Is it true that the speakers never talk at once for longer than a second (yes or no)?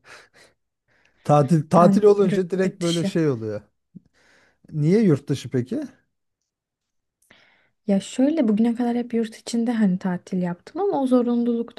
no